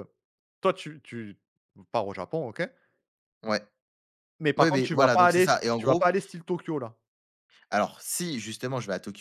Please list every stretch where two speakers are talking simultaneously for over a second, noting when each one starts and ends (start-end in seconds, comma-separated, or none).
4.6-6.1